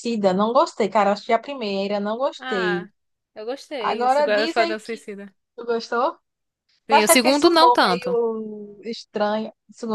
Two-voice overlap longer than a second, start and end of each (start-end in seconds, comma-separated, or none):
3.8-5.1, 6.9-8.2